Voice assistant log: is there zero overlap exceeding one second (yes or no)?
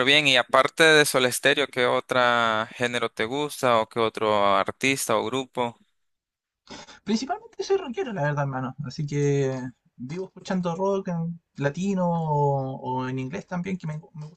yes